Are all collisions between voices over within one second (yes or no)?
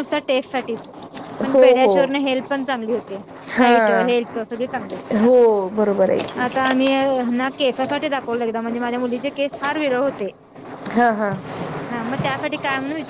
yes